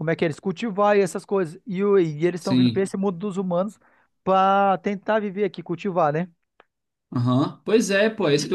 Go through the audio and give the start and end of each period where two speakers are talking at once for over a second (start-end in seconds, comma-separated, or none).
none